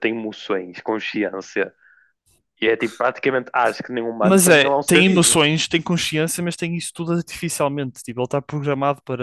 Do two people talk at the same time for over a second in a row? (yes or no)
yes